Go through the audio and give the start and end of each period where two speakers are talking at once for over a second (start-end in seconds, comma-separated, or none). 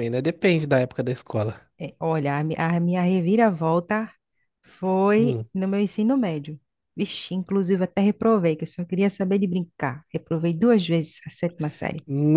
none